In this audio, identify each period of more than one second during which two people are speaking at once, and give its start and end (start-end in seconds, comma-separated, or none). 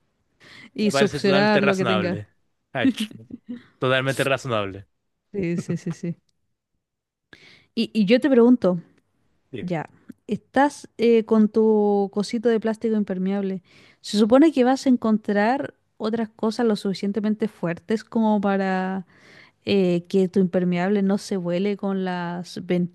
0.8-2.2